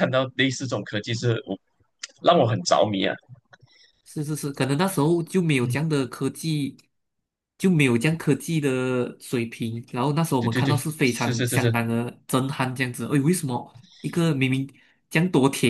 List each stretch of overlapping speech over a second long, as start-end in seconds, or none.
10.4-11.8